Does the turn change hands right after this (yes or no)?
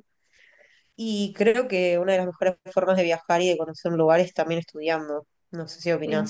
no